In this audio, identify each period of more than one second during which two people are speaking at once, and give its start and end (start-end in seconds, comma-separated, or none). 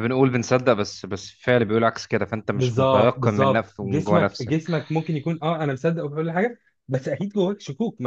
2.5-4.6